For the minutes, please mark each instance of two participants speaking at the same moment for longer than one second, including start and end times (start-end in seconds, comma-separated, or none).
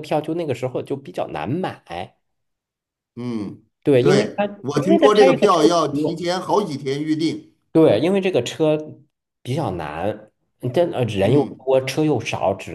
4.0-6.2